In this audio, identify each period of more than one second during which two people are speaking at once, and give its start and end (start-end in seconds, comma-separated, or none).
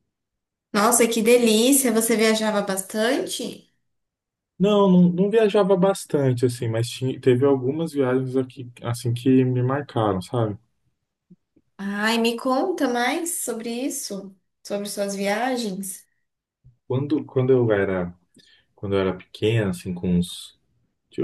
none